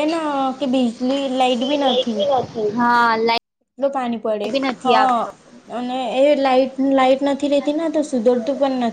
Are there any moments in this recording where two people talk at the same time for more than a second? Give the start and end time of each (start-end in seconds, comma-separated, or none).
none